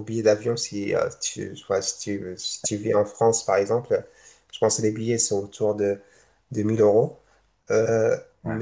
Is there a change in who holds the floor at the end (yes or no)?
no